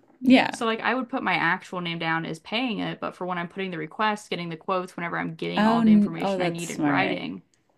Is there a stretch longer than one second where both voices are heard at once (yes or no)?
yes